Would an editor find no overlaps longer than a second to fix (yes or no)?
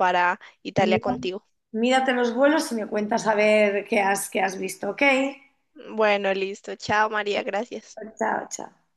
yes